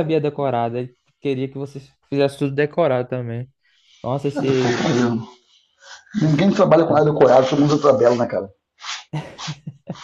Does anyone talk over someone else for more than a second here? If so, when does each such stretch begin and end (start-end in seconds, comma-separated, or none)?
none